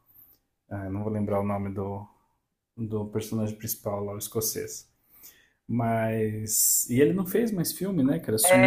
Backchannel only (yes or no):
no